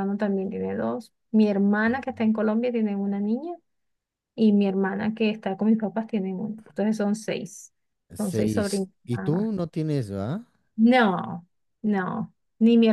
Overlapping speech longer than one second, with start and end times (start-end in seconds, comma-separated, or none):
8.2-9.5